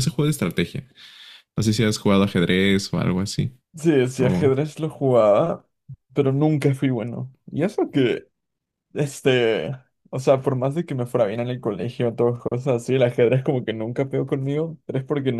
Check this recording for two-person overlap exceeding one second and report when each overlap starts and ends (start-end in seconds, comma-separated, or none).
none